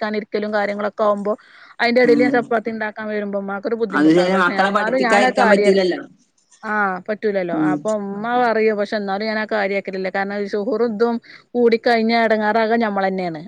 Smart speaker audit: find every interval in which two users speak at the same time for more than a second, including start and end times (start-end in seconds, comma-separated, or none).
4.0-5.8